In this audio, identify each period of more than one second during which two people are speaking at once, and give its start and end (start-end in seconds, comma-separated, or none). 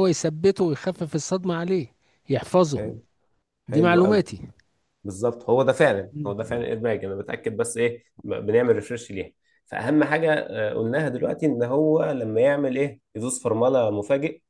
none